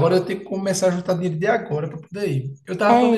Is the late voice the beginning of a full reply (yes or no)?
no